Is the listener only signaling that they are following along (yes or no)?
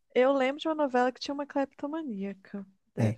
no